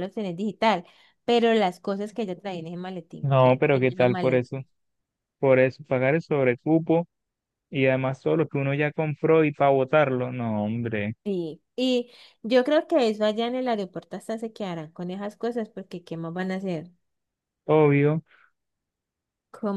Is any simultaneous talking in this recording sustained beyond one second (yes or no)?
yes